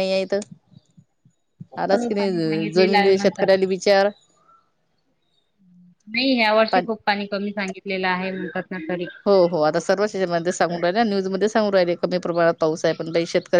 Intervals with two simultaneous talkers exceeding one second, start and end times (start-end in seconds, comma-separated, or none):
1.9-3.5